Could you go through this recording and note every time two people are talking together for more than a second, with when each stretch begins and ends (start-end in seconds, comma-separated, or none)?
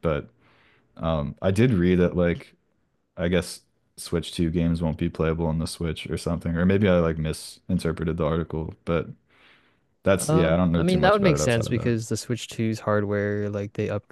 10.2-11.9